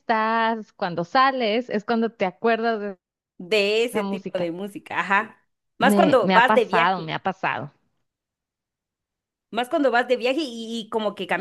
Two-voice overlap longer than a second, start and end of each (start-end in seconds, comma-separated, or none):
5.8-7.1